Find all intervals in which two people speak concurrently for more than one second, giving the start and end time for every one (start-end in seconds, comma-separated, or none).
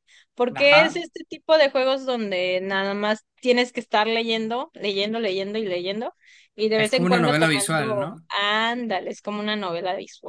6.8-8.3